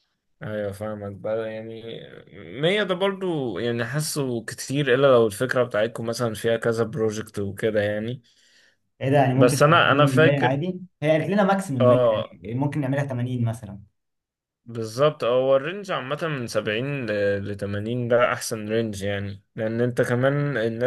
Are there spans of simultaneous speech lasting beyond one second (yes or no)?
yes